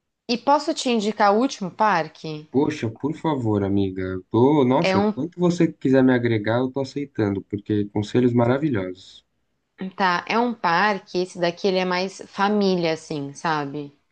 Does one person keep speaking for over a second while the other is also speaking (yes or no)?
no